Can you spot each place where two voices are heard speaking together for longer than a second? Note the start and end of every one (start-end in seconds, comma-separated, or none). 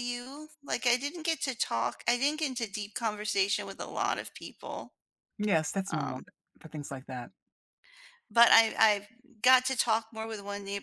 none